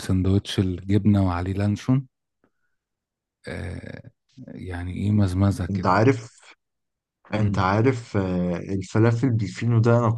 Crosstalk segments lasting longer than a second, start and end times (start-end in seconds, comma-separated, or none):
none